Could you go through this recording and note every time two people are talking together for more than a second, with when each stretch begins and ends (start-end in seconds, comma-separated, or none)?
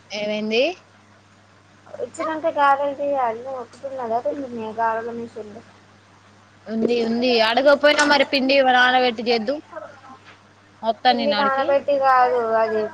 none